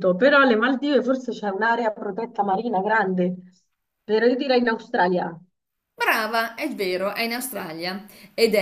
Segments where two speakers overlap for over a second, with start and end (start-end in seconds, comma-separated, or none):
none